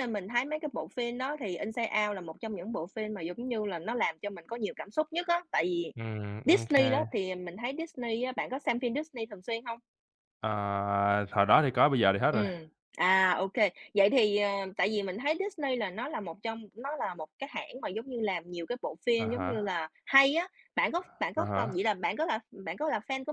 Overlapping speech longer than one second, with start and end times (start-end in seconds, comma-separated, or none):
none